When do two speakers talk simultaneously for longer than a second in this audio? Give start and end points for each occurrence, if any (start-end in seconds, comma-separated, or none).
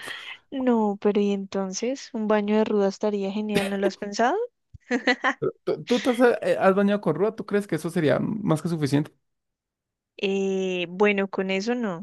none